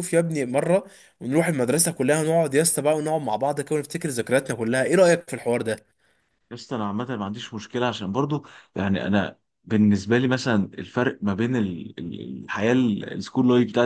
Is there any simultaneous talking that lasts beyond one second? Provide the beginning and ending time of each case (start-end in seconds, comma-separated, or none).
none